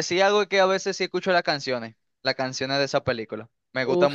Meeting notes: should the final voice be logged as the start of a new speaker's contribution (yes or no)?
yes